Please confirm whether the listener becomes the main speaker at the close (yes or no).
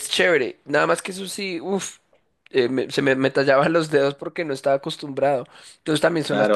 yes